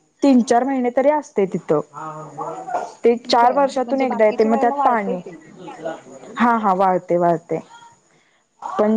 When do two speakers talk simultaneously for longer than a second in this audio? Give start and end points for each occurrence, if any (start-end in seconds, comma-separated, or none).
3.3-5.2